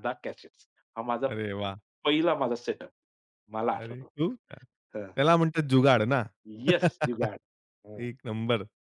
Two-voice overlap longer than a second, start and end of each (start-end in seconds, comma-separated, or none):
none